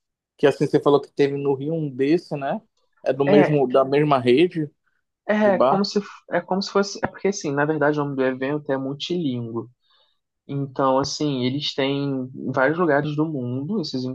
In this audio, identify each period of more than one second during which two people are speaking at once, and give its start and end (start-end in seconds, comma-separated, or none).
none